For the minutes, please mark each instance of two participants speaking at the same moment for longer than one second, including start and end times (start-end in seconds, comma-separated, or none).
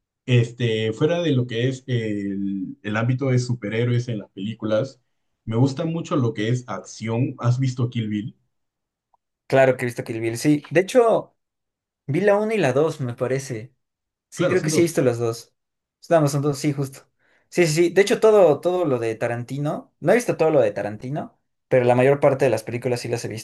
none